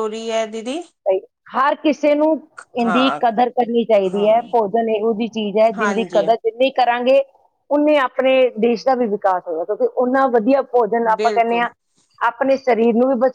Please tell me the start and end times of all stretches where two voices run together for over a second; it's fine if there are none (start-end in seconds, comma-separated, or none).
none